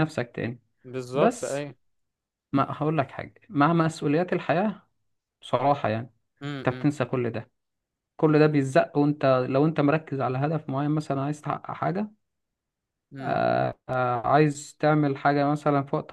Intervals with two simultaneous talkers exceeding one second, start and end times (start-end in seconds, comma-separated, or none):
none